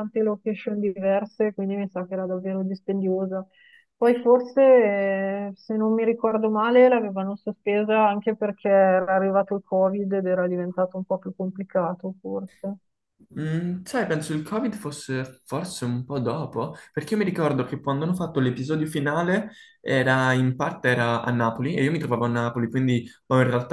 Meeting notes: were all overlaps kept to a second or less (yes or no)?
yes